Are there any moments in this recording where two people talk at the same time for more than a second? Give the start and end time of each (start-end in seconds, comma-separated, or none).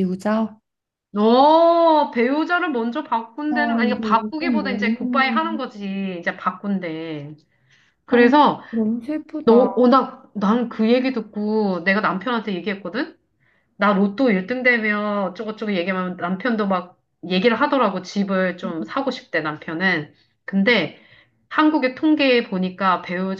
3.5-5.4